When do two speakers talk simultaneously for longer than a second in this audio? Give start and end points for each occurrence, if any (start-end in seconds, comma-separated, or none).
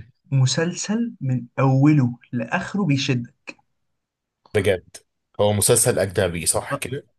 none